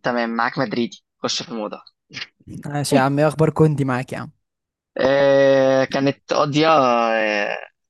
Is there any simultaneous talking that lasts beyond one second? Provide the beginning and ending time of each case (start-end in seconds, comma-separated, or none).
none